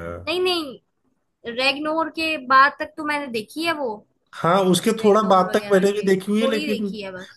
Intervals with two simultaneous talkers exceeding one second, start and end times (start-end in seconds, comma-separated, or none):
5.0-6.8